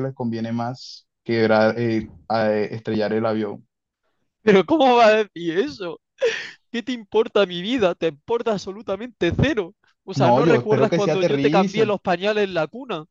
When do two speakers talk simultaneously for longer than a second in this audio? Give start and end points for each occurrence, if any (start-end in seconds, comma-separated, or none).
10.2-11.9